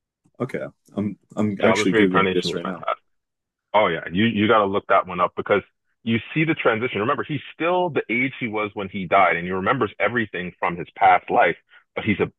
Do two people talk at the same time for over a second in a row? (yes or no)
yes